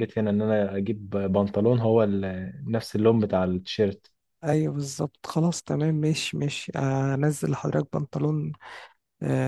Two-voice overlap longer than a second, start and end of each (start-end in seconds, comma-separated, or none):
none